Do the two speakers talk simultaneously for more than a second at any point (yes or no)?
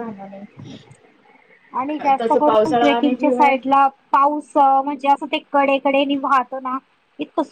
yes